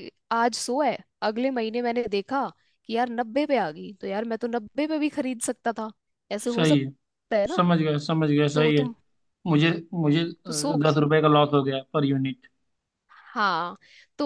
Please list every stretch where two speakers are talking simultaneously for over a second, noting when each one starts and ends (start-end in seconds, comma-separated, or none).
none